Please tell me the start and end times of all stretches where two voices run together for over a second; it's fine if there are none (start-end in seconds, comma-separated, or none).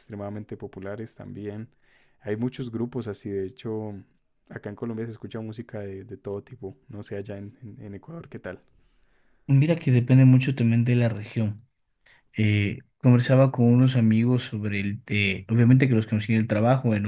none